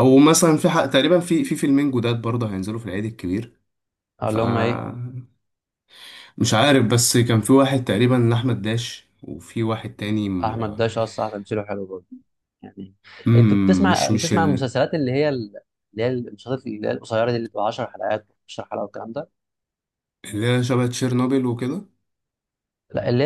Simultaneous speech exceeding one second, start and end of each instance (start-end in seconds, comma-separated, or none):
13.3-14.7